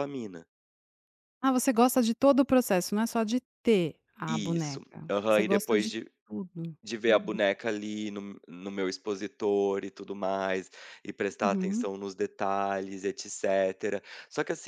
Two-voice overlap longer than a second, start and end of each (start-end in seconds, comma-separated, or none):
4.3-6.1